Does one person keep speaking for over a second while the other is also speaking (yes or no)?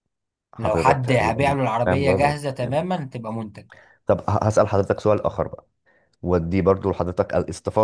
yes